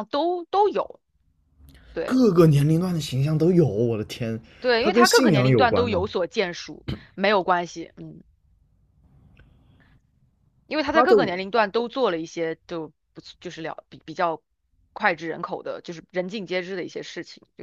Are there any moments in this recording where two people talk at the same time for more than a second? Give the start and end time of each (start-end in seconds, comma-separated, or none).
4.8-6.1